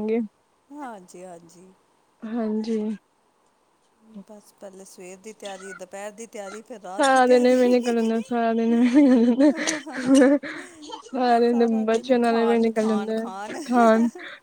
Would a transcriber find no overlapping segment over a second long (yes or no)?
no